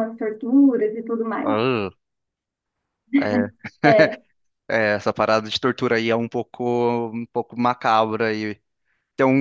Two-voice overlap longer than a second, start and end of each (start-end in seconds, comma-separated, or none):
none